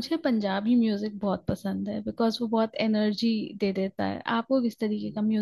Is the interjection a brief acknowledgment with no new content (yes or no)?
no